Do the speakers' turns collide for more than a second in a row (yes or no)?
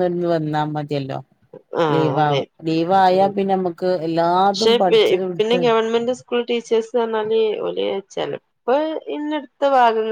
no